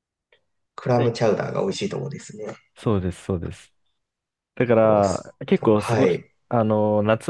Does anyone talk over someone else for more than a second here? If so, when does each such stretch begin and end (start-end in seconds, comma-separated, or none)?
4.8-6.3